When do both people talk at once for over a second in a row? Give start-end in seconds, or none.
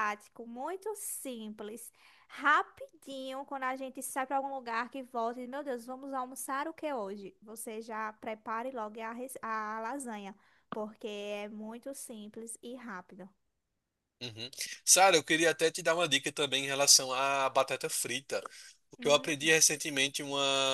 none